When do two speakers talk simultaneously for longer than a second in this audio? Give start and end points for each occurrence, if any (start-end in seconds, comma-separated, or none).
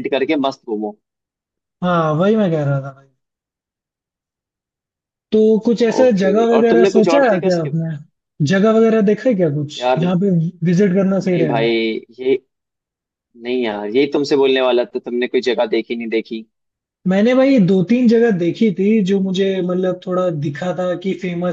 6.0-7.8